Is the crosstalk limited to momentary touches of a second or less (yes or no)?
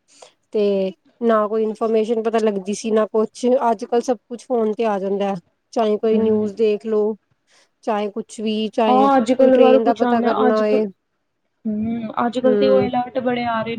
no